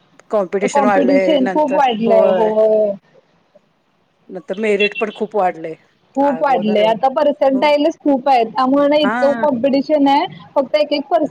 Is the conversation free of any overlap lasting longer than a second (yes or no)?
no